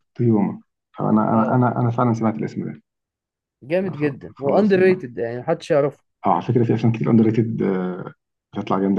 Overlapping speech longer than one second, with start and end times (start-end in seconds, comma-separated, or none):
3.8-5.1